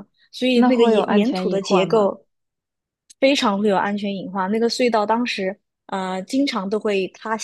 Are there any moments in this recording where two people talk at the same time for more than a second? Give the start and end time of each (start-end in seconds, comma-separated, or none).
0.5-2.1